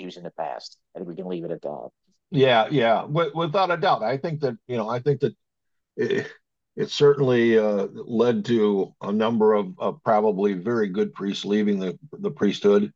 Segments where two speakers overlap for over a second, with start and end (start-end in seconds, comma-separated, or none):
none